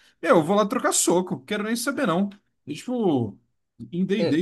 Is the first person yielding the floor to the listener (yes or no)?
no